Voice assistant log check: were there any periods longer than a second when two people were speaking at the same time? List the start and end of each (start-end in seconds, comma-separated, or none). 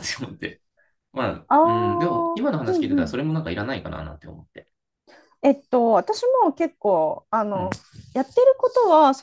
1.5-3.2